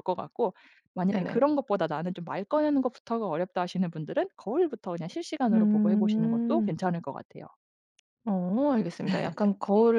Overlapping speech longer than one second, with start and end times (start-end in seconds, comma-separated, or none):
5.5-6.8